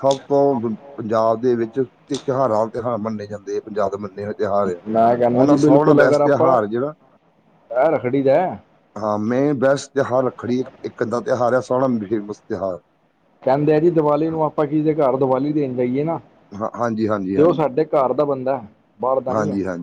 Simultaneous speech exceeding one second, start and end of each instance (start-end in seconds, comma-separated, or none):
5.3-6.6